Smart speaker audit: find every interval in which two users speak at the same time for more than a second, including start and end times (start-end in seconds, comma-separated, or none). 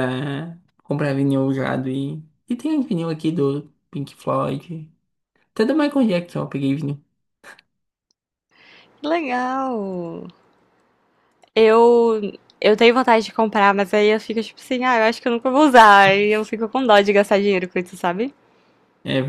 none